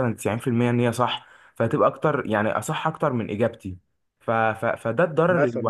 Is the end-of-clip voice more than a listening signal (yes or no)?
no